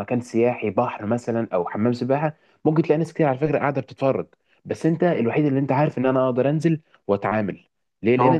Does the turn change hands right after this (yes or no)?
no